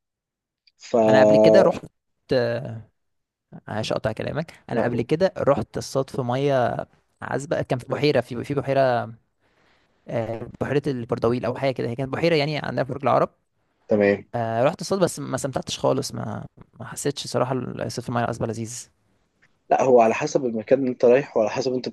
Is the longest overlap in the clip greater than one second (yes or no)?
no